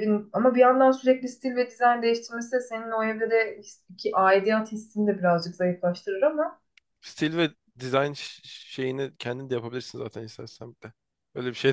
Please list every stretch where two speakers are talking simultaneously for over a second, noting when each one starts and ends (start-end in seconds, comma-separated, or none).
none